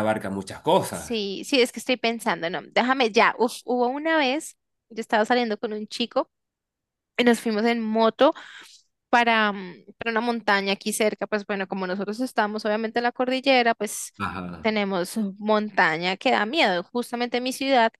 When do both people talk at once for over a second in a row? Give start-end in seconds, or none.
none